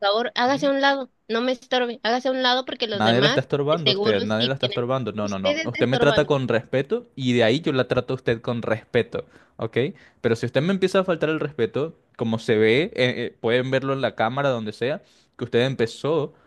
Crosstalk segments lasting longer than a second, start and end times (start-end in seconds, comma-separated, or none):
2.9-6.3